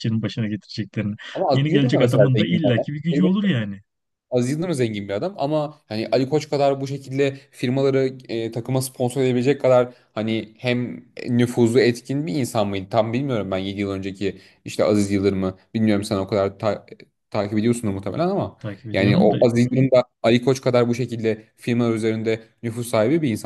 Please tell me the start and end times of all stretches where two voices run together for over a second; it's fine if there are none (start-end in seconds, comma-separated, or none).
1.5-3.5